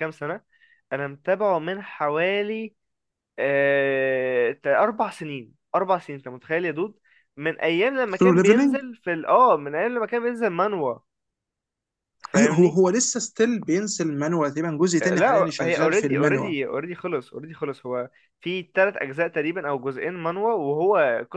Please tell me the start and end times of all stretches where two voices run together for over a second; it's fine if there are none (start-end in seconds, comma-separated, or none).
15.0-16.5